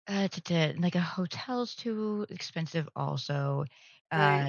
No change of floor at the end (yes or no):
no